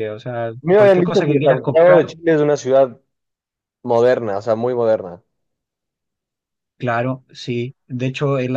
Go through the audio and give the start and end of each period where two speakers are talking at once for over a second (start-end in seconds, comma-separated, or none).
0.6-2.0